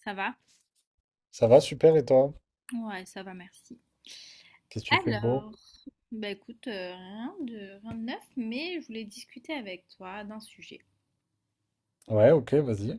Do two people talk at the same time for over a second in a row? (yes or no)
no